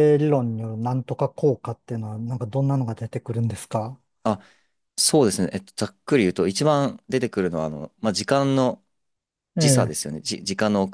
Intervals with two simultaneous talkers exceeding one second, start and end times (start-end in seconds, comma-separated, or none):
none